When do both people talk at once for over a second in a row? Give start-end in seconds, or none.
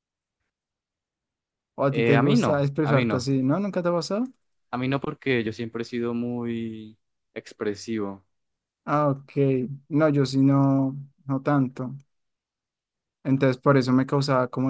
1.9-3.3